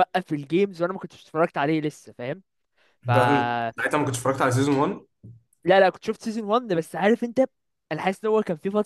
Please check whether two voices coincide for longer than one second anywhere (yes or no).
no